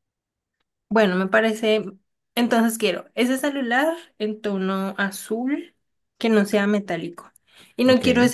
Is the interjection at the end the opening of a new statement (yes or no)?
no